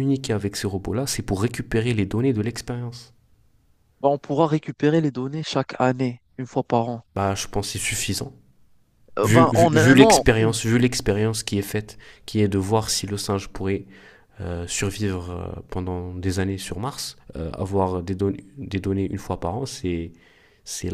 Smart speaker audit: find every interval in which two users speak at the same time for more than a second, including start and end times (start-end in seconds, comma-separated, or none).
9.2-10.6